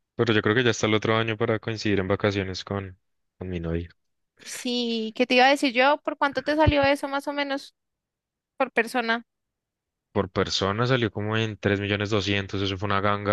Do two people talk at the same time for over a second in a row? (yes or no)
no